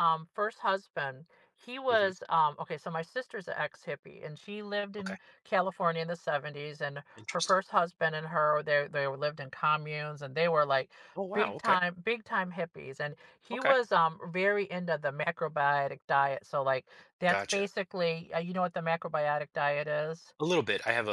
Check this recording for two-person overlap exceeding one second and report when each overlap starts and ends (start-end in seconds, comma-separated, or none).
none